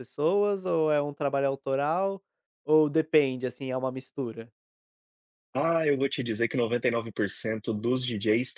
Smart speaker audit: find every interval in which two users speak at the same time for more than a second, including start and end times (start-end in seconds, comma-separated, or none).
none